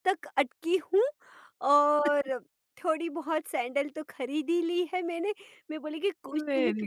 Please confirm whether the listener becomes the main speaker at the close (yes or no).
no